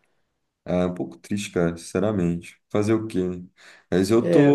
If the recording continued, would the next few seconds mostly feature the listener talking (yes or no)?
no